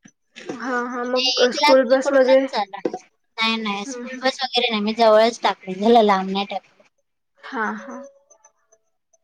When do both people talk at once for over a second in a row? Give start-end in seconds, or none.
0.6-2.5